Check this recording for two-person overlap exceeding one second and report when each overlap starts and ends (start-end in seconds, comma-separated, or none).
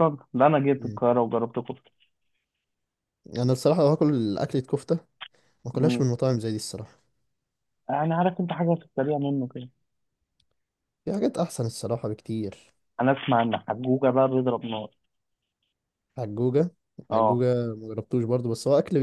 none